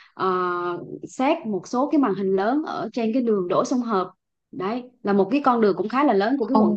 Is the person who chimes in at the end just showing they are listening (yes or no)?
no